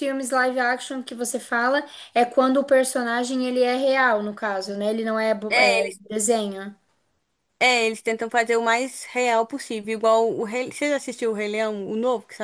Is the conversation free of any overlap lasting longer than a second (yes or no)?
yes